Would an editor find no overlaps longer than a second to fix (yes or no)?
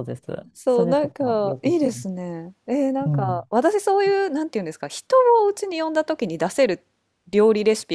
no